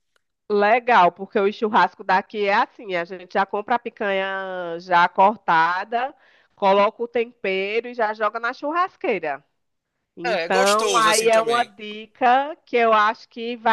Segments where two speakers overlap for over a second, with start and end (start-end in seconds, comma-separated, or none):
10.2-11.7